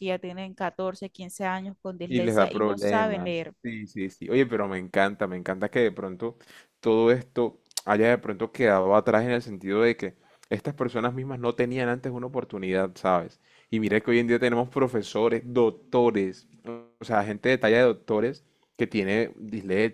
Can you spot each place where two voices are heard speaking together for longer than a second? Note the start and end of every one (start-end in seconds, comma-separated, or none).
2.1-3.5